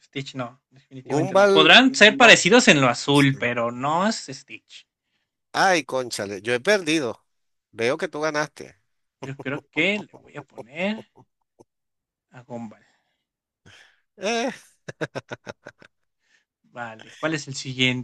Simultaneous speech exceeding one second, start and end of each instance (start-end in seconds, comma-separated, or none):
1.0-2.4